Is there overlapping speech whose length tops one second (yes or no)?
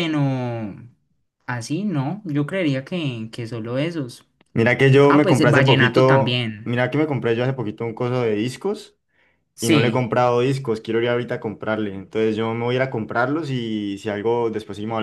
yes